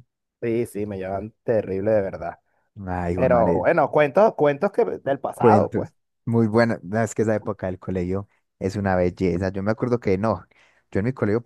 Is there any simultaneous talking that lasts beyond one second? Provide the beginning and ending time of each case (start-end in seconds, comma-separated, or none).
none